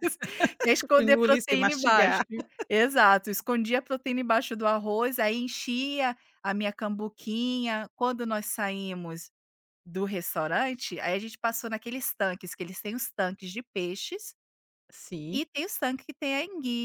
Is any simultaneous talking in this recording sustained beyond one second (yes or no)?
yes